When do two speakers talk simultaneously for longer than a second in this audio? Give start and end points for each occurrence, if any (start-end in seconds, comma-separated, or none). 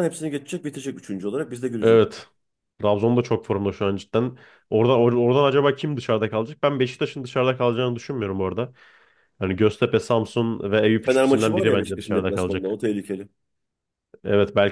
11.0-12.8